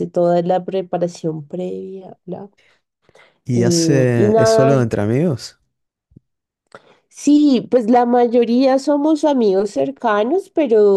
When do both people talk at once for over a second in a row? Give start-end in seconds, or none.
3.5-4.8